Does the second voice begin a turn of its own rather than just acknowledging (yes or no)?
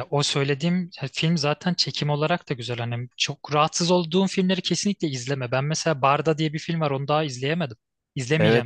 yes